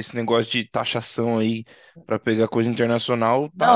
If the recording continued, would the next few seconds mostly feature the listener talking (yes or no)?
yes